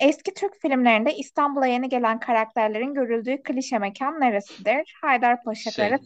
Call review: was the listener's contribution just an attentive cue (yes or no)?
yes